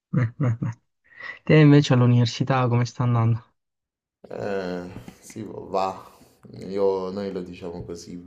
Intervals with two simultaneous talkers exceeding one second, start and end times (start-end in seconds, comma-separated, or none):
none